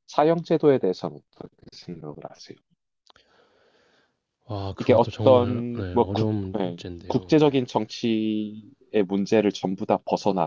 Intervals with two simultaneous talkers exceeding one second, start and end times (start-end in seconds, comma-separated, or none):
4.8-7.4